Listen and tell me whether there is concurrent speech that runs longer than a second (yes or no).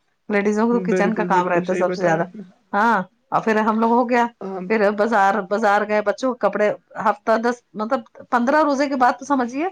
yes